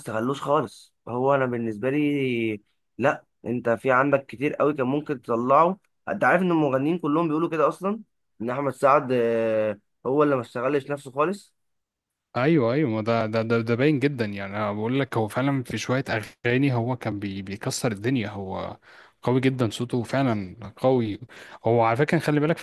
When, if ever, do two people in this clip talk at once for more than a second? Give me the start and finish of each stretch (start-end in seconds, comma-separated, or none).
none